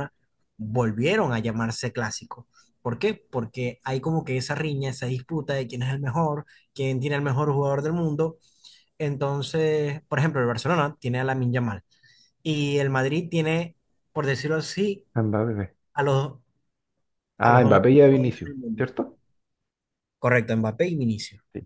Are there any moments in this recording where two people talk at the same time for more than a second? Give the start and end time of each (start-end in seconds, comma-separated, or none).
17.4-18.8